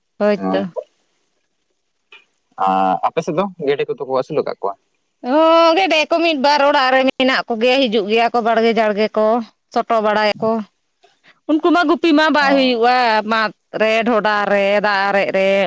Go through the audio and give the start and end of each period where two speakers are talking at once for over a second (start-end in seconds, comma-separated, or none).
none